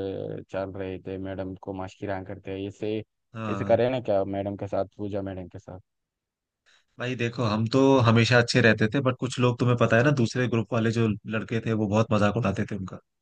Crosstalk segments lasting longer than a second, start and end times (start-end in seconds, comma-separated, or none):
none